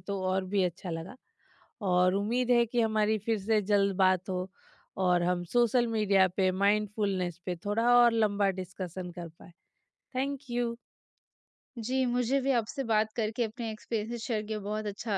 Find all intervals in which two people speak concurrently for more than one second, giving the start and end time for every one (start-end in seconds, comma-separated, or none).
none